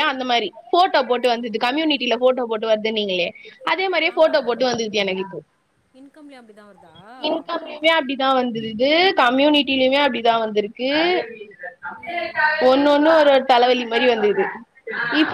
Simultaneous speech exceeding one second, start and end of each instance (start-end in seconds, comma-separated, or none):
none